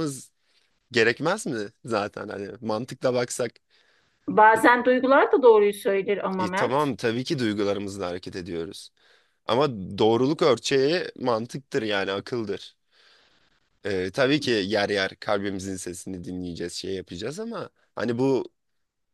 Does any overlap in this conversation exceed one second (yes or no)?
no